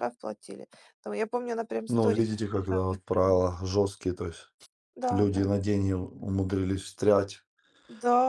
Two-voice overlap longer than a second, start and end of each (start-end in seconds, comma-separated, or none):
1.9-3.4